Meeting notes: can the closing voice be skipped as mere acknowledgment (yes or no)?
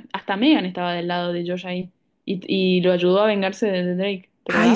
no